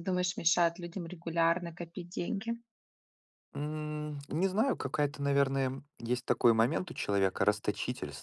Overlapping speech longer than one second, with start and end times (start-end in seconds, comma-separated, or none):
none